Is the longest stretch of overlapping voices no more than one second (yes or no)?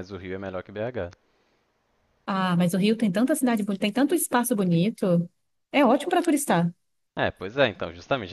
yes